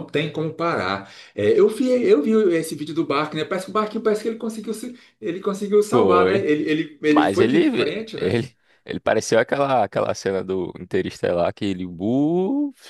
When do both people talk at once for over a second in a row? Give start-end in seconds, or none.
7.1-8.4